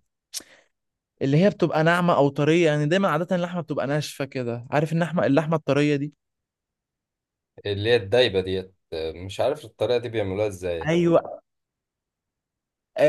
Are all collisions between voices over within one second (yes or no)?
yes